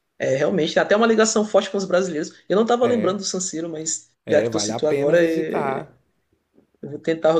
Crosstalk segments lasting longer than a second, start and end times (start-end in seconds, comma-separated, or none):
4.2-5.9